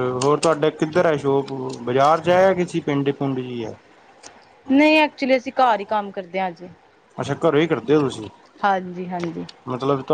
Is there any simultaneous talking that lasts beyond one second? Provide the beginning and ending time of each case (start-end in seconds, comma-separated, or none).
none